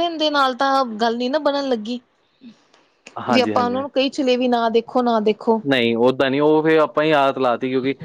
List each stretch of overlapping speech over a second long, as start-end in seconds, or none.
none